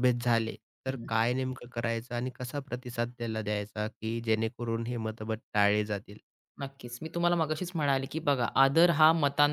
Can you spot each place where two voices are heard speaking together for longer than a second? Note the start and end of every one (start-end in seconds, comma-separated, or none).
none